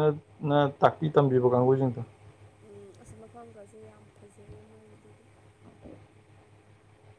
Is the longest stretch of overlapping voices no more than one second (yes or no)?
yes